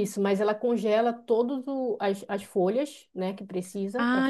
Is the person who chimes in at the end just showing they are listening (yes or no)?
no